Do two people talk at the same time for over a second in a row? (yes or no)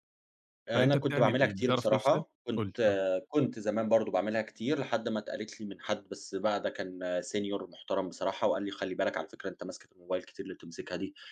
yes